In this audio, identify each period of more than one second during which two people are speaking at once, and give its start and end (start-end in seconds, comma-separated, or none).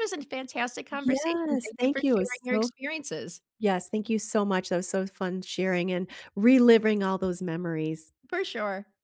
0.9-2.7